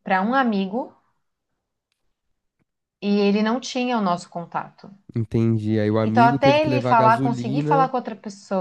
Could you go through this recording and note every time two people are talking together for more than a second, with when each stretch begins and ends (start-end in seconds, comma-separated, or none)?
6.0-7.9